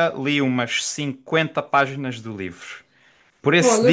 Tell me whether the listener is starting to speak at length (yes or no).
no